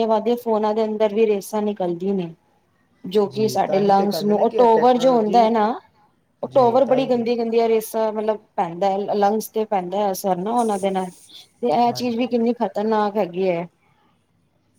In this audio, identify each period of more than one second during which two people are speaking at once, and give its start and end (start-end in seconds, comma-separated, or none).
3.3-5.5